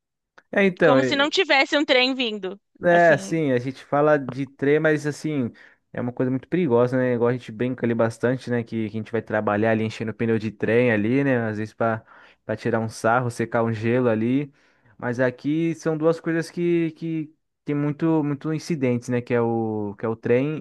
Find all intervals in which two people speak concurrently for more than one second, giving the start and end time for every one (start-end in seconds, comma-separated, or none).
none